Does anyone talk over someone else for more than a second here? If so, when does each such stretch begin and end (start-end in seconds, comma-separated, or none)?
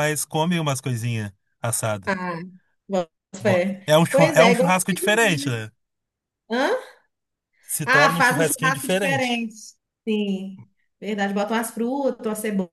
3.4-5.5, 7.8-9.4